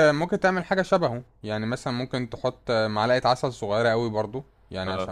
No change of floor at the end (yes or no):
yes